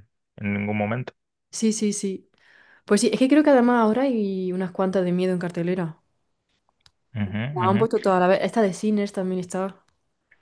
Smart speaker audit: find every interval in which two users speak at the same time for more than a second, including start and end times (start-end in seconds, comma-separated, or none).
none